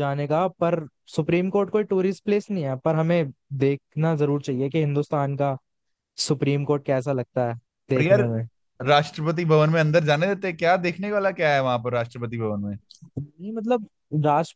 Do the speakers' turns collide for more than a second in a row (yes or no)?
no